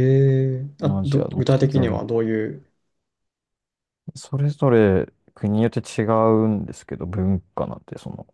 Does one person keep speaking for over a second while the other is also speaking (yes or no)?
yes